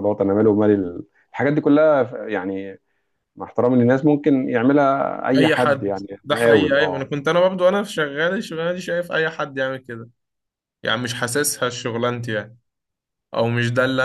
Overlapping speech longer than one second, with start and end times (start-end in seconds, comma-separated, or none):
5.4-7.0